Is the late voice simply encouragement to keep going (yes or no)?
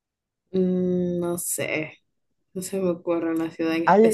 no